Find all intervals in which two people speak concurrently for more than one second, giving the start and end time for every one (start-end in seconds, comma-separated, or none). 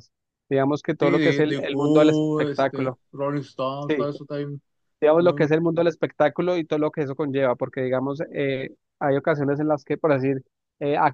1.0-3.0